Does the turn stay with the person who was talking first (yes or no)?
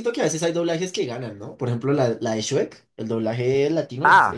no